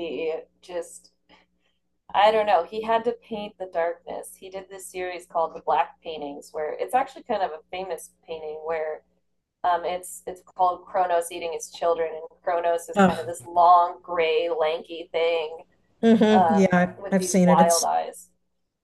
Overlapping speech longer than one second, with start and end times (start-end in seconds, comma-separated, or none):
16.3-17.9